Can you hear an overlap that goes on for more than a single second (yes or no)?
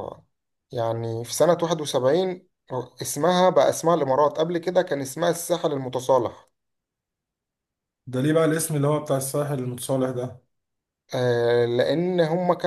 no